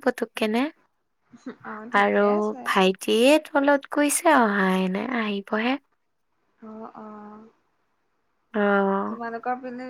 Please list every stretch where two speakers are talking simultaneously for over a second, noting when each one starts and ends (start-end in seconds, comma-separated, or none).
none